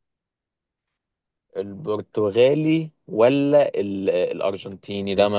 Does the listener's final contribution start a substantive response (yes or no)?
yes